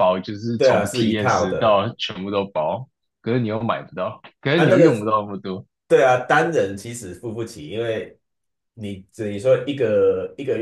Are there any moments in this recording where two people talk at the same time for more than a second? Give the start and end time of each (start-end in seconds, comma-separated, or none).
0.6-1.9